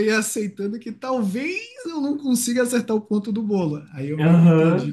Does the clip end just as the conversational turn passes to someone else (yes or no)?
no